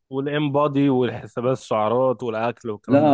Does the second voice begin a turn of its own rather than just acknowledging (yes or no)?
yes